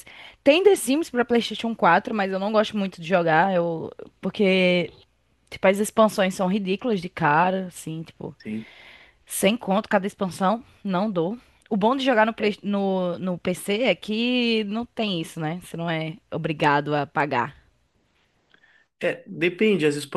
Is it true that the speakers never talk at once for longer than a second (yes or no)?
yes